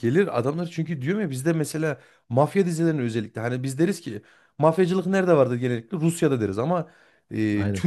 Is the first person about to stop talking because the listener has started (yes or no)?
no